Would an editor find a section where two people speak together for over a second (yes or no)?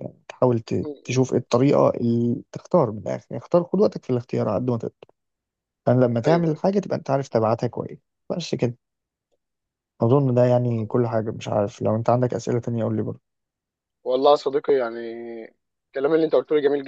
no